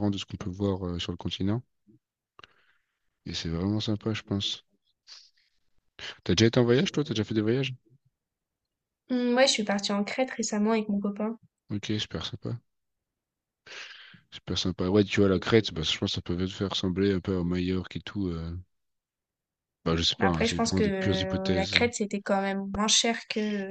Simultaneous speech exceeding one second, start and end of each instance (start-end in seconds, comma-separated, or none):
20.2-21.8